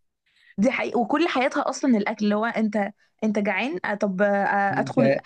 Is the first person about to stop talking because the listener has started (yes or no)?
no